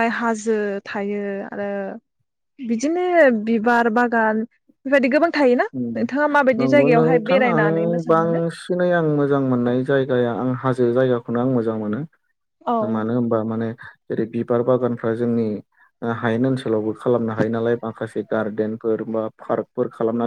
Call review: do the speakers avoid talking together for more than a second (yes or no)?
no